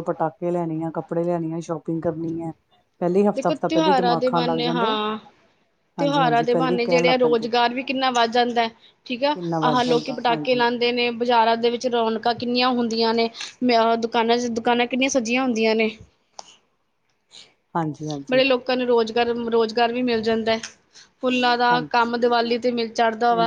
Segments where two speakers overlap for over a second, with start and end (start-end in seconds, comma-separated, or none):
3.4-4.9, 6.0-7.5, 9.3-10.7